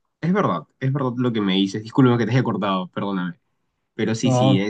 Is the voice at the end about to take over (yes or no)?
no